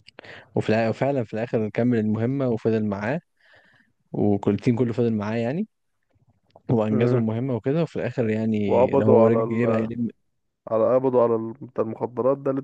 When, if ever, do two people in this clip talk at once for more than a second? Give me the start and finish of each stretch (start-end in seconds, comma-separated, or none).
8.6-9.9